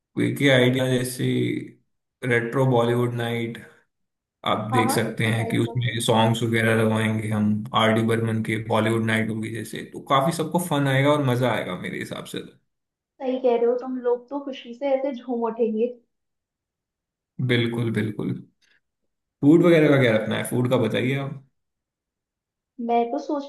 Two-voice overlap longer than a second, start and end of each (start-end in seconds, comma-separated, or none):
4.7-6.0